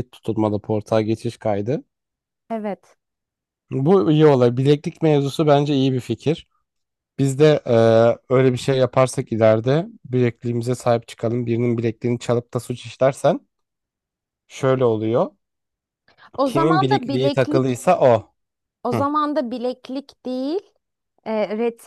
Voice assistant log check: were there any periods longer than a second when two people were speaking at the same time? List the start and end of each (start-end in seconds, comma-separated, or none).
16.4-17.6